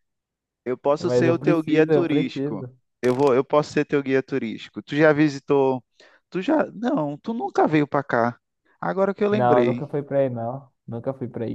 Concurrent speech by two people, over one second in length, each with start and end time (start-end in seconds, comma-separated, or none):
1.0-2.7